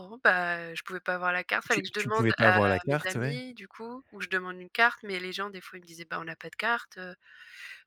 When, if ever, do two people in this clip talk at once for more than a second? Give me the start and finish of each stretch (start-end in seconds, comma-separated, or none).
1.7-3.4